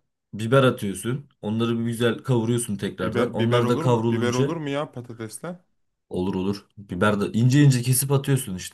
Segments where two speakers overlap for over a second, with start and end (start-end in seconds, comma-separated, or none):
3.0-4.5